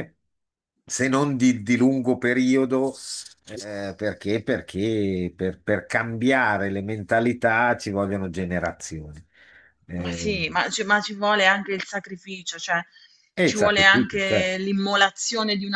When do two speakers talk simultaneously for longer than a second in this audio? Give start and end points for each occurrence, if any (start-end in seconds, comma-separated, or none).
13.4-14.6